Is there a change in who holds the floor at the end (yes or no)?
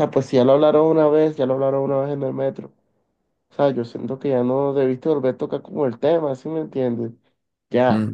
yes